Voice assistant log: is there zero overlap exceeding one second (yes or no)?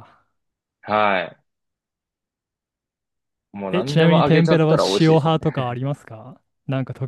no